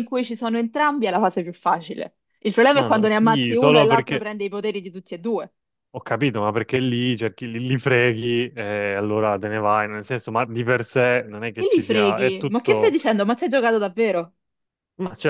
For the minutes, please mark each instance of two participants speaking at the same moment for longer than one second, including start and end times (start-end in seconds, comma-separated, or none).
2.7-4.3, 11.6-13.0